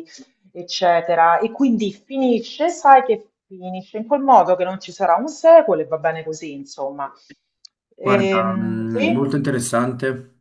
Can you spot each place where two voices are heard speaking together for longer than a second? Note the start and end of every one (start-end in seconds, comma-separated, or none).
8.0-9.4